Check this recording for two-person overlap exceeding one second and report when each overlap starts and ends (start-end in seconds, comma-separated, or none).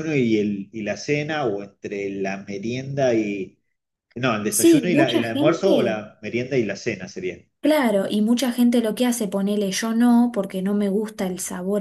4.5-6.0